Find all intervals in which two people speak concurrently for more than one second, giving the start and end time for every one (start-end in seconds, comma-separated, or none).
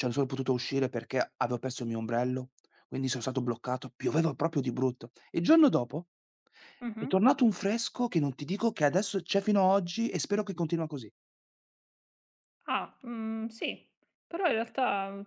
none